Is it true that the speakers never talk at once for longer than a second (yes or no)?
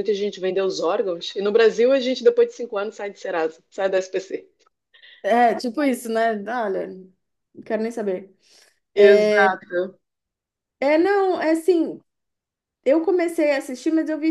yes